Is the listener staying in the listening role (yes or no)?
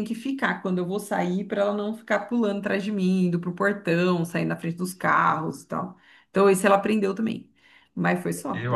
no